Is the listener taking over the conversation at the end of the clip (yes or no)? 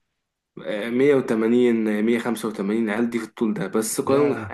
no